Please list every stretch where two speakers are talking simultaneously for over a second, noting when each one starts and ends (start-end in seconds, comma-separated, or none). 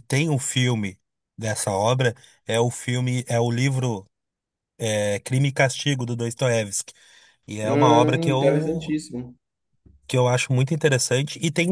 7.6-9.0